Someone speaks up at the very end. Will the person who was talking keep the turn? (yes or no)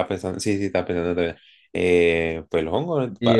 no